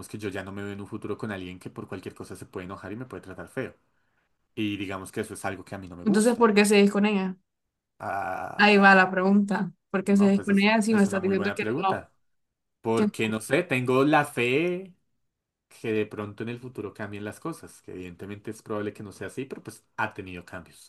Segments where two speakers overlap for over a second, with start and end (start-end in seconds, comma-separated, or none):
10.0-12.0